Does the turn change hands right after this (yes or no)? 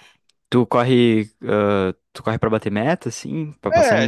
yes